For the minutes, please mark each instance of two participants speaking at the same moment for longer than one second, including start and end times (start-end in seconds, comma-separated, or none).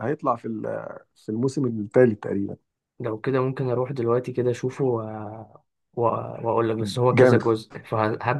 none